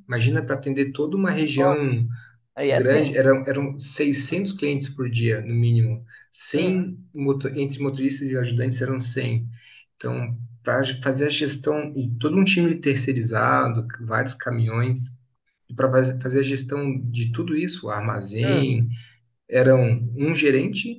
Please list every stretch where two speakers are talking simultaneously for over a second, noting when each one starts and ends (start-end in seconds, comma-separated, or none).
none